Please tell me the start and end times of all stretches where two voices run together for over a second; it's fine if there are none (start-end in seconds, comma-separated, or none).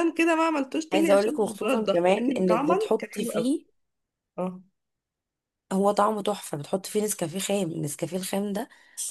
0.9-3.5